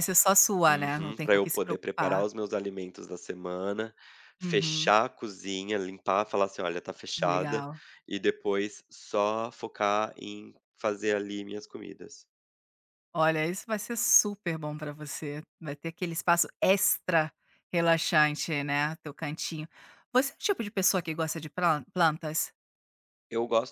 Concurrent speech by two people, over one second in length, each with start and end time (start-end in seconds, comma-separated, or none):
0.7-2.2